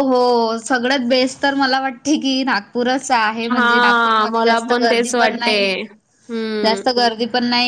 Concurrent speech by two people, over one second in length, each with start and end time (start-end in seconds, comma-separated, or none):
3.5-5.5